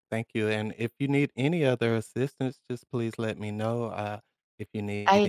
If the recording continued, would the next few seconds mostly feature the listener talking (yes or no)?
yes